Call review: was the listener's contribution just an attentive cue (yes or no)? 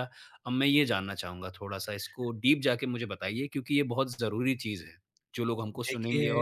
no